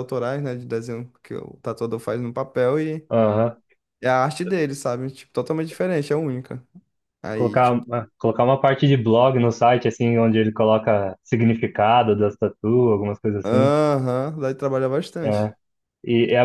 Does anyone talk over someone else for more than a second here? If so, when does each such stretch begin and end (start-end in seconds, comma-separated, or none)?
none